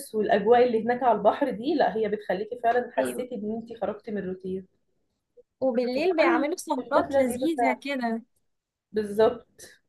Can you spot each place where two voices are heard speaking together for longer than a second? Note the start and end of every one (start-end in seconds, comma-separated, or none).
6.0-7.8